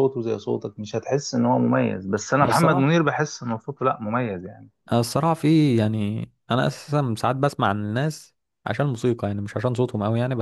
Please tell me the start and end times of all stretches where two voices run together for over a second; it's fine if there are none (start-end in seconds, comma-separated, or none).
none